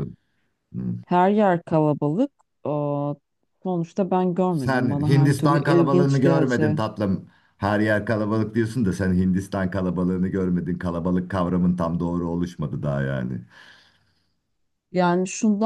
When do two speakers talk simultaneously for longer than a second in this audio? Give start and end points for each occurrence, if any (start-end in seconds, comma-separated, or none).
4.5-6.8